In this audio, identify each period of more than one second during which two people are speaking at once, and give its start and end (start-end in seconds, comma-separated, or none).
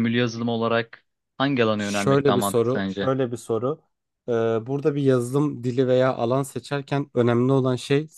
1.8-3.1